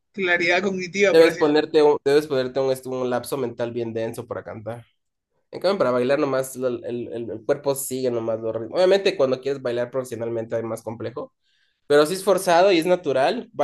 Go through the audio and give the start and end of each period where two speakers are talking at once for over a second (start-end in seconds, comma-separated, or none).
none